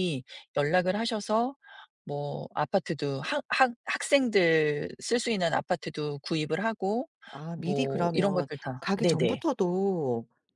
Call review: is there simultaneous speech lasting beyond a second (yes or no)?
yes